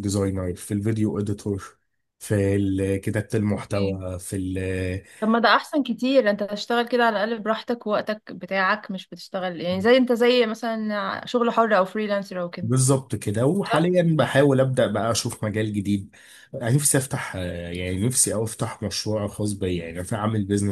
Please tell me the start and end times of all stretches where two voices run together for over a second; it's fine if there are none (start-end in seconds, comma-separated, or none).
none